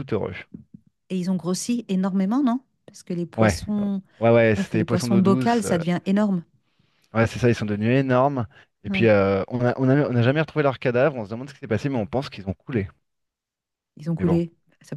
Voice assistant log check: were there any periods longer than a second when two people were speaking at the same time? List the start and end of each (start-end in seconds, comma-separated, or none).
4.6-5.8